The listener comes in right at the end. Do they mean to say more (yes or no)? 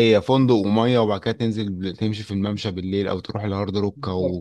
yes